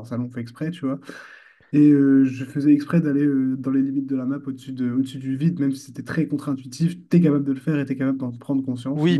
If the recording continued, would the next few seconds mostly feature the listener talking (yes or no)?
yes